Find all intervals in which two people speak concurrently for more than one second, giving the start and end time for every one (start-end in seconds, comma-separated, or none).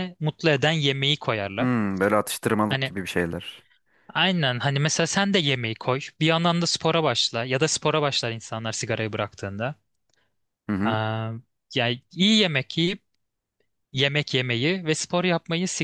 none